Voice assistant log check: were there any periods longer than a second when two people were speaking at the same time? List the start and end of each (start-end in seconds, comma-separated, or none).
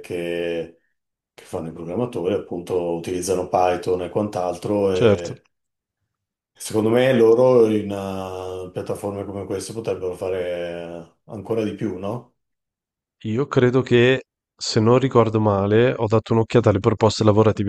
none